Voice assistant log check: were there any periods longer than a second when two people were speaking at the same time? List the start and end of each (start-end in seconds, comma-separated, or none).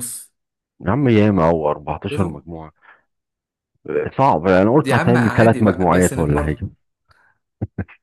4.7-6.6